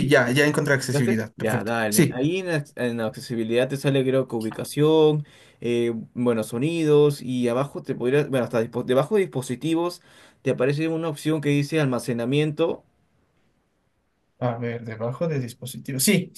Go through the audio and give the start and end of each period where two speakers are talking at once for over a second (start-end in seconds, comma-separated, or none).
0.8-2.2